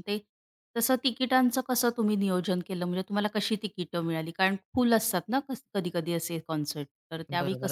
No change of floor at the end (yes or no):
no